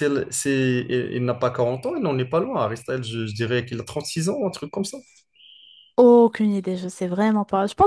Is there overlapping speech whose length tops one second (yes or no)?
no